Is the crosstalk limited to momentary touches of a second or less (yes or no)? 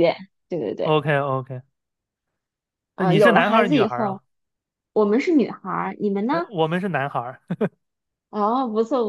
no